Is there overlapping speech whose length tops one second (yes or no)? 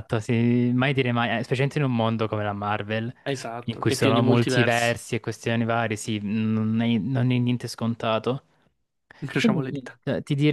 yes